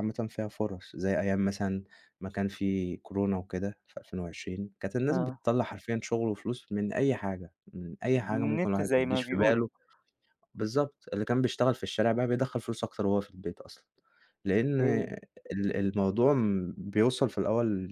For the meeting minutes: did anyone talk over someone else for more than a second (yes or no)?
yes